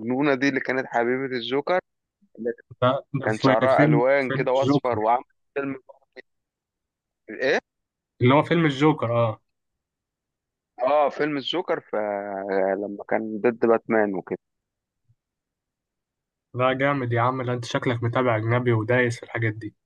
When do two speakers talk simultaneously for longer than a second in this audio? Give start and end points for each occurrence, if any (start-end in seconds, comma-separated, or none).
3.2-5.1